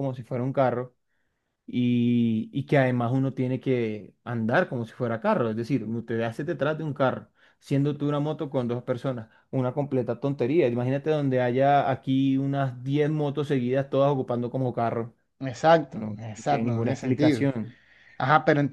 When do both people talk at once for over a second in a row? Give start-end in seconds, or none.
15.9-17.5